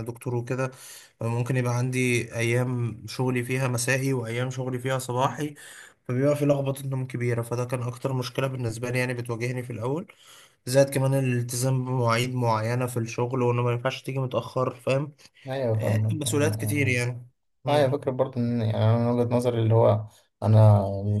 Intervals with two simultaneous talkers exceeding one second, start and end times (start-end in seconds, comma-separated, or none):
15.7-16.9